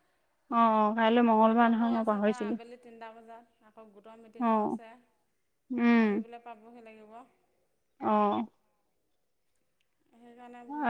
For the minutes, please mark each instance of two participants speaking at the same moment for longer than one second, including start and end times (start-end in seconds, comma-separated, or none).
0.5-2.5